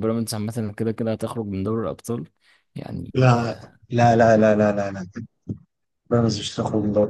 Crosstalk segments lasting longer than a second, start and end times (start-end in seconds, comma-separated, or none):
none